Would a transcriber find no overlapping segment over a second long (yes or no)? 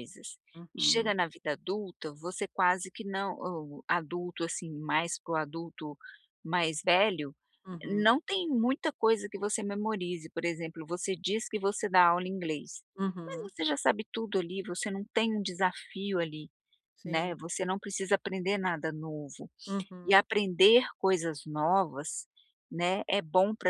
yes